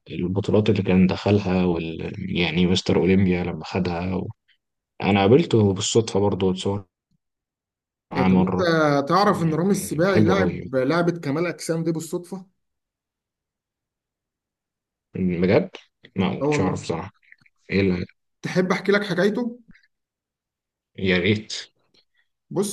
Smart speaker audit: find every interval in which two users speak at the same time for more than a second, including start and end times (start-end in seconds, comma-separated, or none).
9.2-10.7